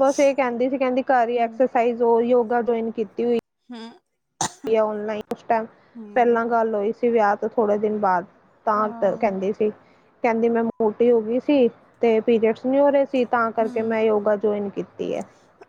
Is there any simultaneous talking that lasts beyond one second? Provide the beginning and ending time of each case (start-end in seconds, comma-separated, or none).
none